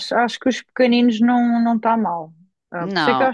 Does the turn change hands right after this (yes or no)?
no